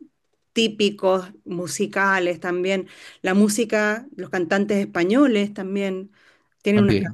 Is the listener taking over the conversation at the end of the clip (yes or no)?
no